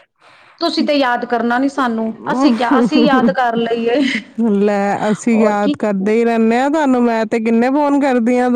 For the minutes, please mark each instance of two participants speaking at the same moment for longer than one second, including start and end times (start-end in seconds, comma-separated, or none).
none